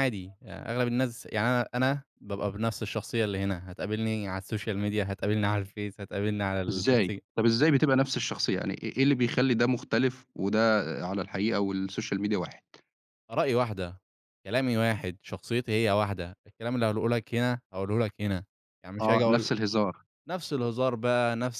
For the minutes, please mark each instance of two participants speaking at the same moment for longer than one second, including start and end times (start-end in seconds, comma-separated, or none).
none